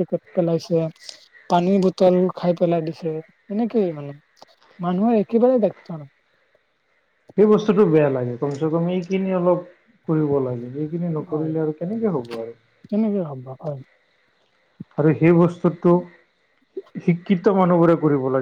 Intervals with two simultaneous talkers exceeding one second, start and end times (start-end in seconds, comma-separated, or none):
none